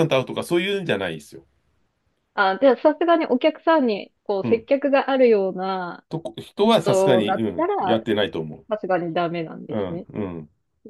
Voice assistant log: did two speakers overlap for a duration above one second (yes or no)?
yes